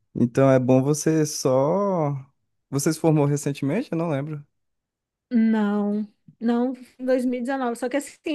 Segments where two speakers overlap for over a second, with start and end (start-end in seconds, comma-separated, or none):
none